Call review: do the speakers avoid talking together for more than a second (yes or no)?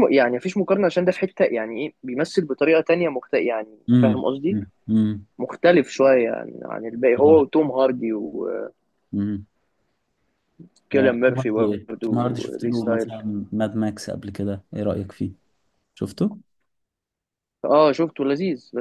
no